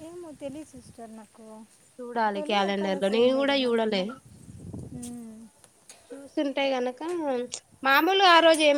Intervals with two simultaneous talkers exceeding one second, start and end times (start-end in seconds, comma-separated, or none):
2.3-4.0